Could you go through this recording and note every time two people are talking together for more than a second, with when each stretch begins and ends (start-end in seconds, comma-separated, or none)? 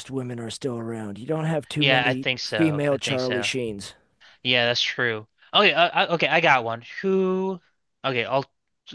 1.8-3.5